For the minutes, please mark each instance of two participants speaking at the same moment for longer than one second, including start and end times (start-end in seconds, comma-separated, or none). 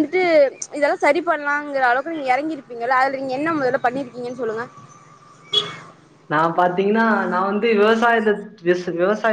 none